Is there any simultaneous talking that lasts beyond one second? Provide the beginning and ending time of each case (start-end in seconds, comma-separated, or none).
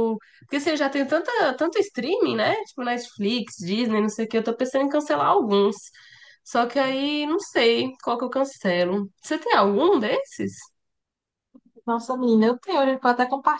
none